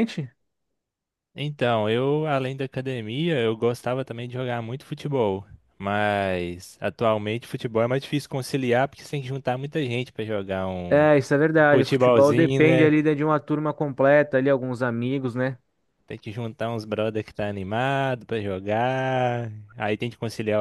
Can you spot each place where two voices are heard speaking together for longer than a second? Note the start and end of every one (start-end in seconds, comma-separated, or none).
11.7-12.9